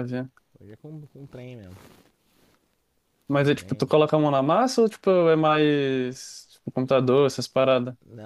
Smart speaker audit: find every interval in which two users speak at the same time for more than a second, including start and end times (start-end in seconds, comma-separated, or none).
none